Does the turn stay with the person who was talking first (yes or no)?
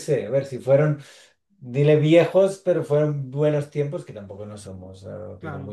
no